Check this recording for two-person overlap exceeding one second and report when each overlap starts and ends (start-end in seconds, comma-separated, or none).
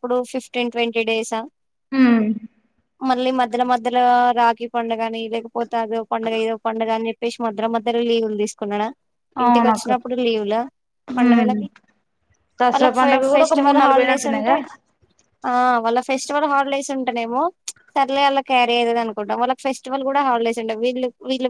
12.7-14.5